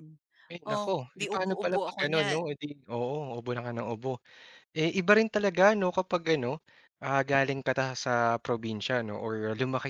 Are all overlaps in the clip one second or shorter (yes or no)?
no